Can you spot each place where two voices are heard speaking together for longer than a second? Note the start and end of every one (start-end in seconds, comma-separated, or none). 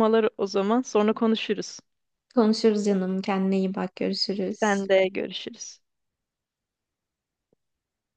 none